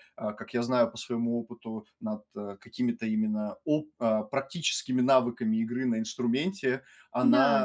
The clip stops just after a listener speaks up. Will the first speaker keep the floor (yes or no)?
yes